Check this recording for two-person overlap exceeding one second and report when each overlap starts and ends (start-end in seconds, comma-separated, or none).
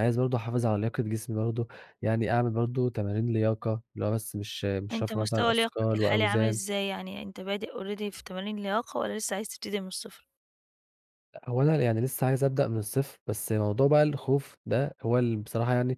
4.9-6.6